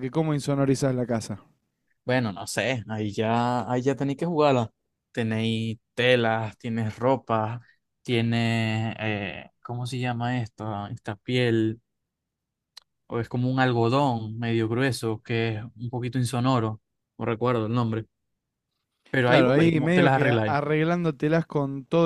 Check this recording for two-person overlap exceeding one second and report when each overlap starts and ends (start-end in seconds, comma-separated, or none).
19.2-20.6